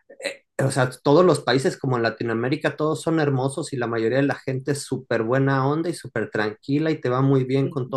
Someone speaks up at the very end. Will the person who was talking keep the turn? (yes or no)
yes